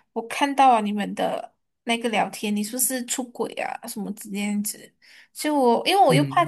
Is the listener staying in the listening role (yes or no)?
yes